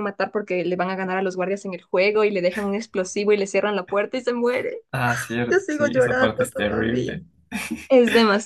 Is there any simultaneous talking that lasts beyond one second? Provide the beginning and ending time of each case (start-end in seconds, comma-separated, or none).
5.5-7.2